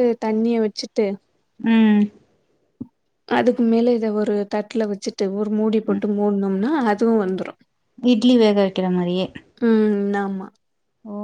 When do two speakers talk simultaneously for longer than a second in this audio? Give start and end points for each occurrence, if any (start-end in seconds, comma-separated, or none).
none